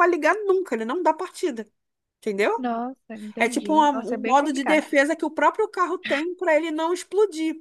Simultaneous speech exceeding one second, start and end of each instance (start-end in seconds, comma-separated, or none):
3.4-4.8